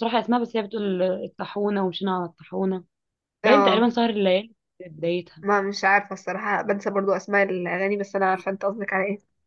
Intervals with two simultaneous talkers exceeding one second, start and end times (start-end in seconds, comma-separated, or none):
none